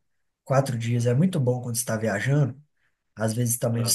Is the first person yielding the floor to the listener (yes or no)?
no